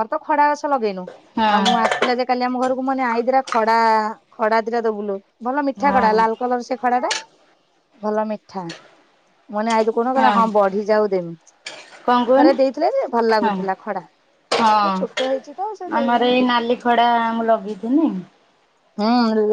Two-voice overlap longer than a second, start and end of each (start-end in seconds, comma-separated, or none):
14.7-16.3